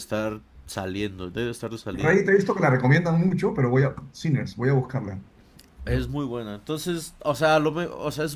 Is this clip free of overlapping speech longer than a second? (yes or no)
yes